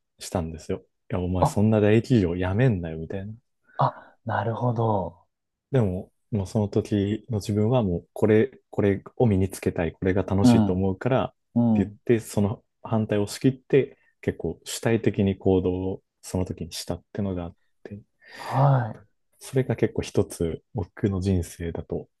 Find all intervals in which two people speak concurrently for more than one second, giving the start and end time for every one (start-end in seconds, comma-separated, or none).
none